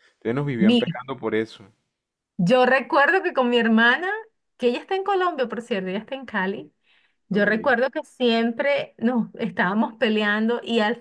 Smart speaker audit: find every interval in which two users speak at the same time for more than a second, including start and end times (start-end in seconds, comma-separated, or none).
none